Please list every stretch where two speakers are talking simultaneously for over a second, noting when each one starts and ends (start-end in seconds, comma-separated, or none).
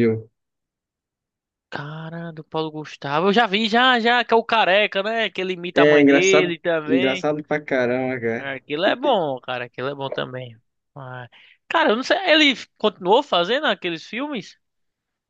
5.7-7.3